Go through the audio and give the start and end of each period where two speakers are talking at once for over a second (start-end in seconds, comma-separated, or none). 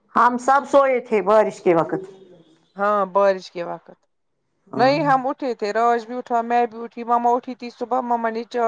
none